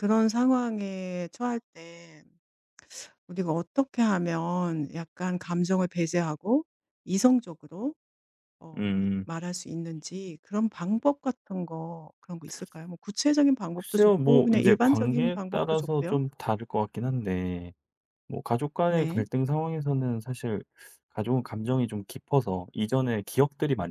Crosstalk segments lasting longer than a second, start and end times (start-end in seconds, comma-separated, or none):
13.7-16.2